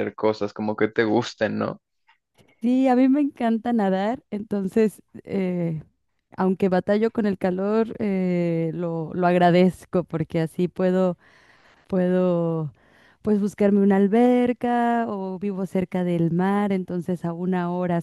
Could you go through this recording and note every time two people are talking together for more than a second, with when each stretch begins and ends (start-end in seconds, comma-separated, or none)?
none